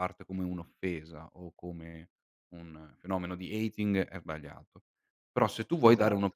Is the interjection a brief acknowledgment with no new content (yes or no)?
yes